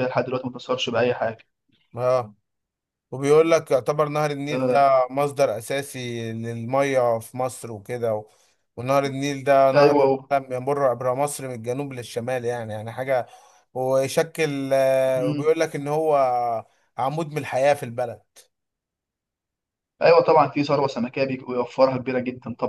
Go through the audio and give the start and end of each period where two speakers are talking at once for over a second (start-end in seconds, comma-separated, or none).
none